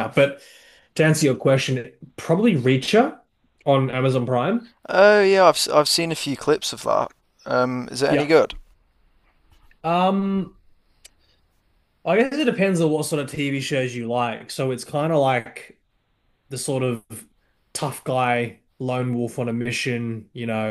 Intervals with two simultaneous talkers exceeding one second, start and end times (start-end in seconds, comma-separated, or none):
none